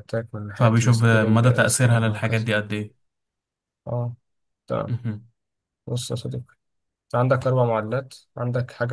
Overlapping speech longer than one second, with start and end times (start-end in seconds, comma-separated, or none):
0.5-2.5